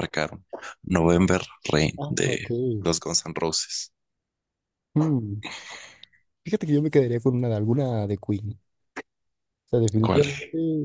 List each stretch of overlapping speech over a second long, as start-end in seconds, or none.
none